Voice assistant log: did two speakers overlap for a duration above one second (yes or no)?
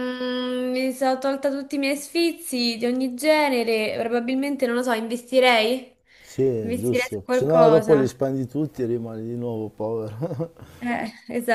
yes